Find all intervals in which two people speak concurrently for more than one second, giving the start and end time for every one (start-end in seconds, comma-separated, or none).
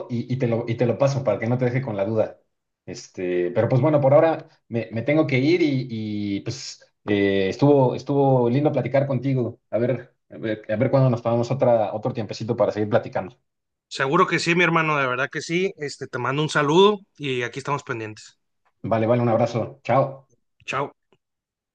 none